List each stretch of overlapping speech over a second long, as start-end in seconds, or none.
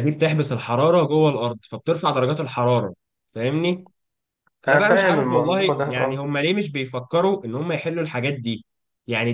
4.7-6.2